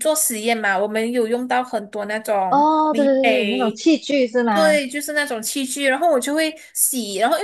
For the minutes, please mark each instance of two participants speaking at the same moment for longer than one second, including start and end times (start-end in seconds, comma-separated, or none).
2.5-3.8